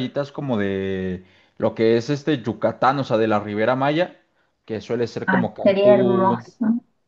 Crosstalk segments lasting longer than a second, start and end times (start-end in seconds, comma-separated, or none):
5.2-6.5